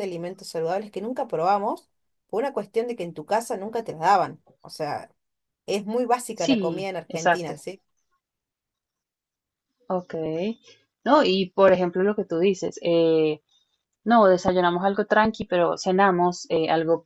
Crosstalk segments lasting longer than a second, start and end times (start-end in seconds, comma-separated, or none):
6.3-7.6